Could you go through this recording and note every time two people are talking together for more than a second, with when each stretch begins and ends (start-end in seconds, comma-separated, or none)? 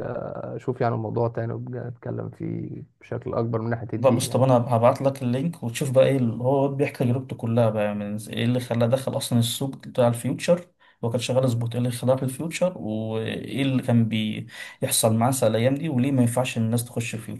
none